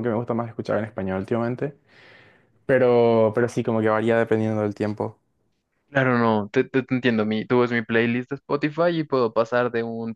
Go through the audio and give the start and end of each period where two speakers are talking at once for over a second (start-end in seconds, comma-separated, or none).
none